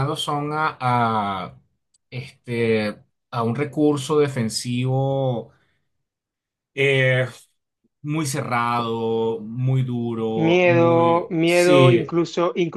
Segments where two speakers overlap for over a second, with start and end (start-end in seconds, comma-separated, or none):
10.3-12.1